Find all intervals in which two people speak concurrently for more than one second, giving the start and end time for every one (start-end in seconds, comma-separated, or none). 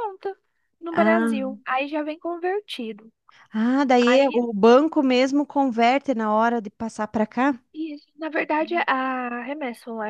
none